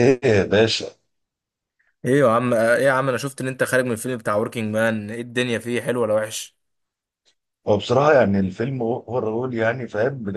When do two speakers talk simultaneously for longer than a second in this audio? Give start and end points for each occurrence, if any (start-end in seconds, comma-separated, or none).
none